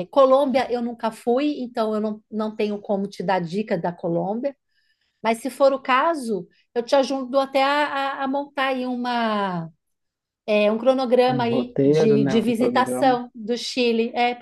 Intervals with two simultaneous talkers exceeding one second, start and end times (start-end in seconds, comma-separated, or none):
11.3-13.2